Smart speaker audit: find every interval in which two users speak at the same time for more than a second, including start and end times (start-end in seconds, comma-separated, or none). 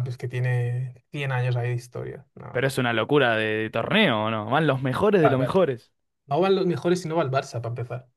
none